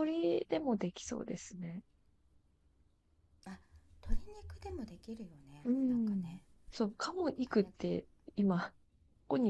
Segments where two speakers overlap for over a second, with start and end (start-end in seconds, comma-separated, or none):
none